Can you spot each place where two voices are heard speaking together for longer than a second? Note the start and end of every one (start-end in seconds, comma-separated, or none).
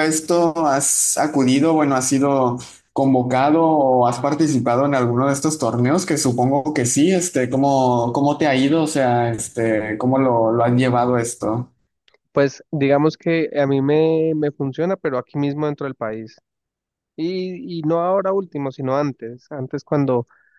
none